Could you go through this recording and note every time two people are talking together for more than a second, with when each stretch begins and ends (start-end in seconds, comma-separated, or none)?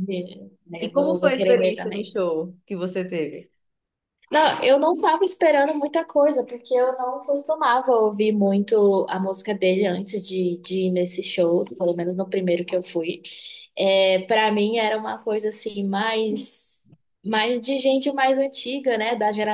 0.8-2.0